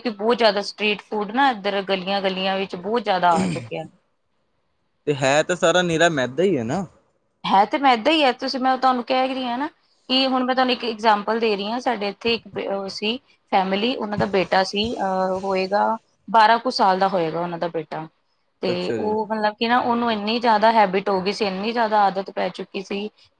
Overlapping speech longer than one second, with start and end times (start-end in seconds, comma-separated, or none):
none